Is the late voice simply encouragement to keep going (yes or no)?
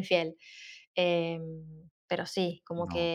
yes